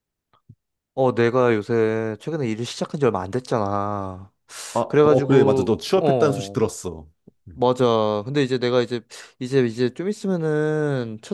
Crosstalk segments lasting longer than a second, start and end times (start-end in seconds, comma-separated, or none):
4.9-6.6